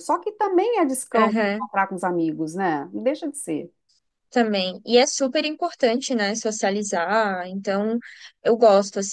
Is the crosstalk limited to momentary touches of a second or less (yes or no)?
yes